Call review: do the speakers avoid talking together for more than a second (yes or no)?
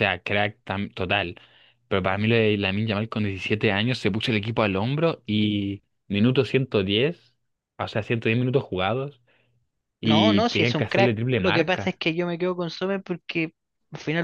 no